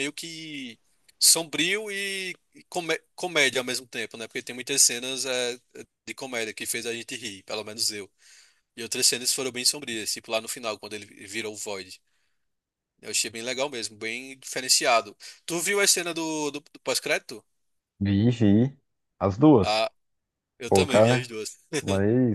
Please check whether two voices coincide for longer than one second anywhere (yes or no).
no